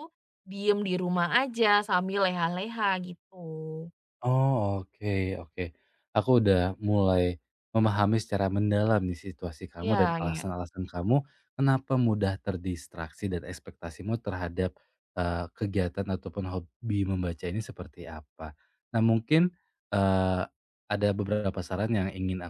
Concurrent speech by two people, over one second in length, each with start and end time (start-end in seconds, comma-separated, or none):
none